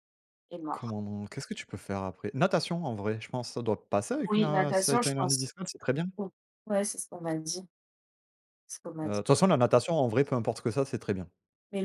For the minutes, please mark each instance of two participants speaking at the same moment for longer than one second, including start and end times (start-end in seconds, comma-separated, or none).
4.3-5.5